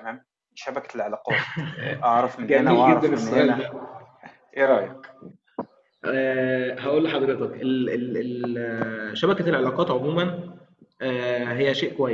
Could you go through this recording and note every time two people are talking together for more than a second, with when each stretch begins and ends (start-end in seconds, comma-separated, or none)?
2.4-3.7